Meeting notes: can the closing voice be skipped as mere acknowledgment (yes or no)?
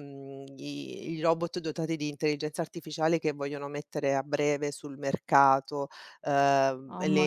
yes